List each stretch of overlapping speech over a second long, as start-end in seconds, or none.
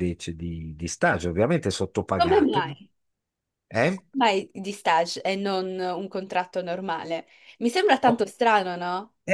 none